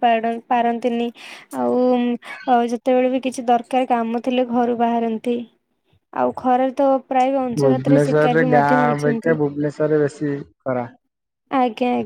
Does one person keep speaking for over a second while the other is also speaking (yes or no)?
yes